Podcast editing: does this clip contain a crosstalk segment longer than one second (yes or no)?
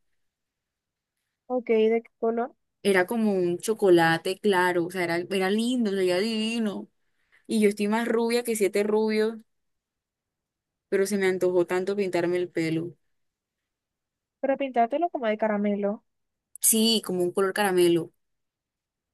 no